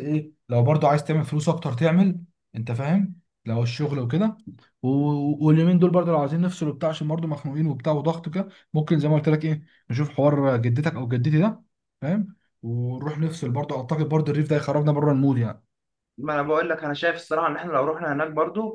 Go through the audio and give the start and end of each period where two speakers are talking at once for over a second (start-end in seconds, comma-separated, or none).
none